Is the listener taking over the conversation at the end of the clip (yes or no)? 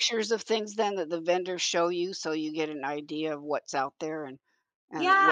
yes